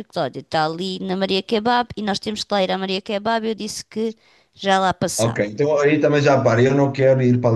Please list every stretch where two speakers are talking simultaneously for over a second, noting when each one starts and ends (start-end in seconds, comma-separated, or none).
none